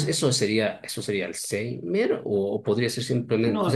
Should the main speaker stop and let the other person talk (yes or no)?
no